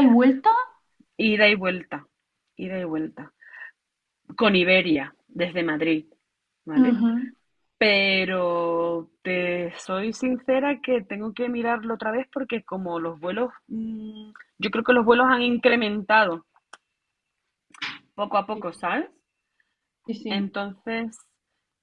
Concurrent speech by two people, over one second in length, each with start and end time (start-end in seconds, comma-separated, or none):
none